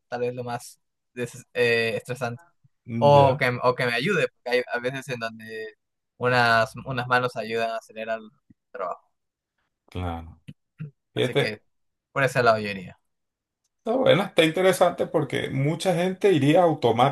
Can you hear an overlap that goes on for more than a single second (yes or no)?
no